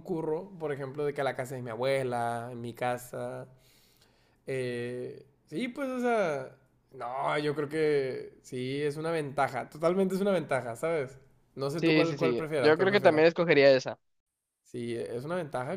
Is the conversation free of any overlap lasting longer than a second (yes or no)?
no